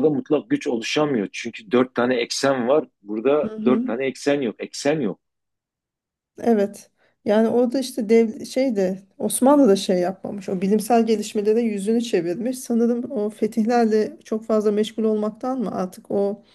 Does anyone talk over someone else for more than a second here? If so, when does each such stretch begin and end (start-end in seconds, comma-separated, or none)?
none